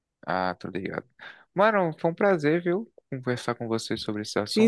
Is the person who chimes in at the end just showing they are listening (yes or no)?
no